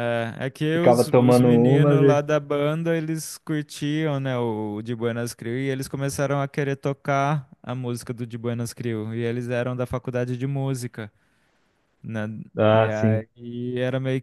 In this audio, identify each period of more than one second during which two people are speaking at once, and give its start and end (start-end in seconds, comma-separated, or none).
0.7-2.2